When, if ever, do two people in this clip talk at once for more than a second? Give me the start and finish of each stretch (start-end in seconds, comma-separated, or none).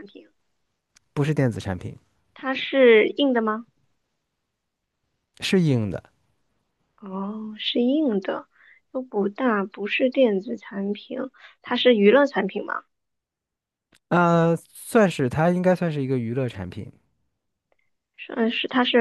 none